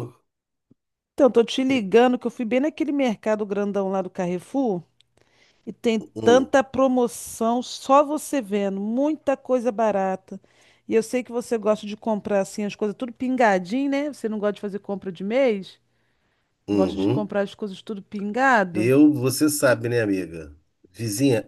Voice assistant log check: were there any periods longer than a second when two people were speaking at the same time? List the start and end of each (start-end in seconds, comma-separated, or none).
none